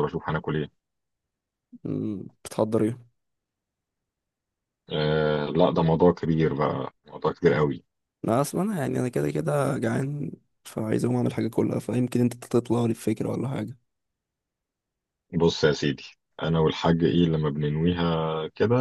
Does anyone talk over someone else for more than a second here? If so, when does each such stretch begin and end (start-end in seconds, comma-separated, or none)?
none